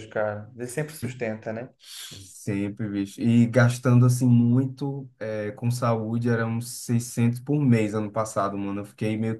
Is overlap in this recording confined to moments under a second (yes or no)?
yes